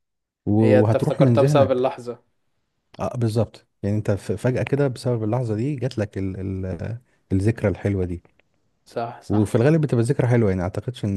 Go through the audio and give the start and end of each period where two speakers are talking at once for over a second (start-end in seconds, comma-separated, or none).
0.6-1.9